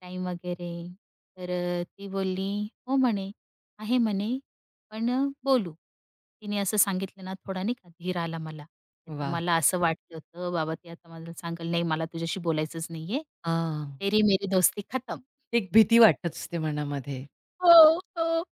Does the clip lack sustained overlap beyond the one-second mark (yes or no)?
yes